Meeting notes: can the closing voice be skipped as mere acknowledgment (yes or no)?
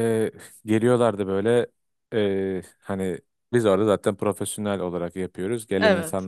yes